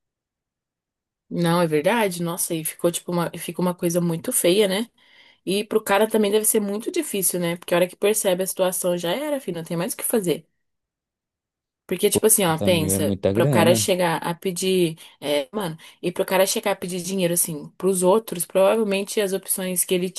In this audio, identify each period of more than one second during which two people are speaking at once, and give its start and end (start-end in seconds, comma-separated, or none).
12.1-13.9